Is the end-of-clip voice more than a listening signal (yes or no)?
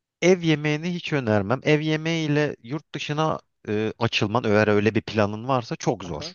yes